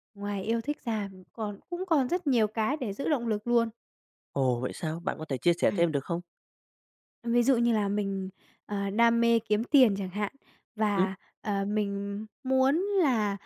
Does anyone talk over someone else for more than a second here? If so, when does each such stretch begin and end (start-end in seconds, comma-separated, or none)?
none